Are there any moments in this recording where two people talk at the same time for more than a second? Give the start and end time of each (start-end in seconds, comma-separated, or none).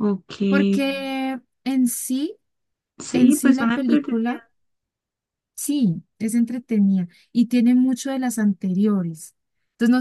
3.1-4.4